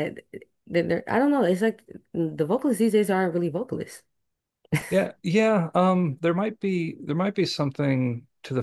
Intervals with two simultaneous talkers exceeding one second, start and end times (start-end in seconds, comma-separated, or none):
none